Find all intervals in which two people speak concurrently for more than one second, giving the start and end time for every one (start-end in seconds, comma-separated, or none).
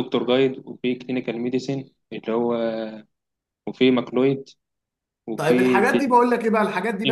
none